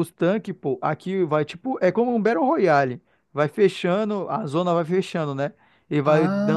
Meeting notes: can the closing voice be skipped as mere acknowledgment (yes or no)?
yes